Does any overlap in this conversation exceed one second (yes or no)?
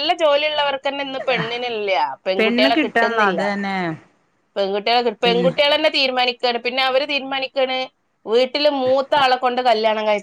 no